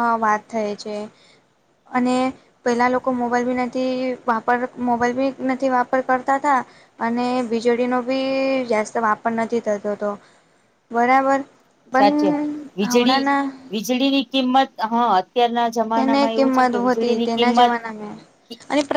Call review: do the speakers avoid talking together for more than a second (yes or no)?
no